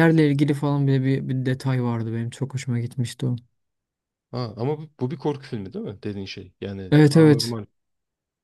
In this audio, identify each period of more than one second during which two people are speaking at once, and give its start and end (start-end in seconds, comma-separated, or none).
none